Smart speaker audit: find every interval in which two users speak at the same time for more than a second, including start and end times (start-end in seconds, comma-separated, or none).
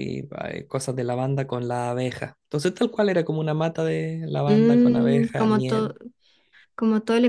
4.5-6.0